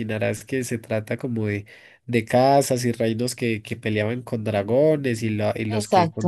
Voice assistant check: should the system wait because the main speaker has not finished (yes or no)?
yes